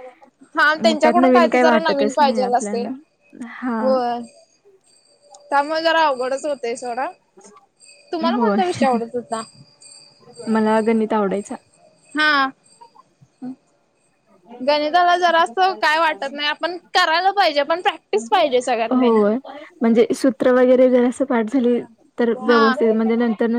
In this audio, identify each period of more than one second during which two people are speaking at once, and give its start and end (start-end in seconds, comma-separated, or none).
0.8-2.9